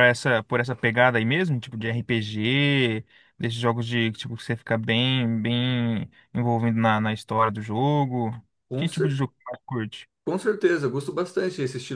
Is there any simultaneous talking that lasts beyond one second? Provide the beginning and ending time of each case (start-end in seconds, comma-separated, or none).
none